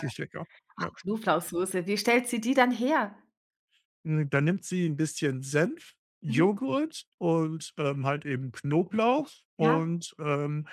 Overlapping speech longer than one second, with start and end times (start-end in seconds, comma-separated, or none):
none